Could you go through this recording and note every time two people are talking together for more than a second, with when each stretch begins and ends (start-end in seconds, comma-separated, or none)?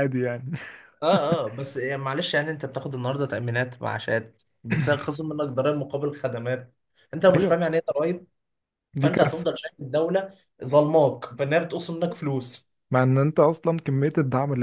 none